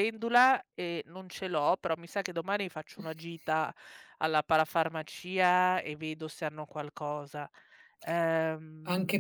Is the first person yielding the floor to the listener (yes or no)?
yes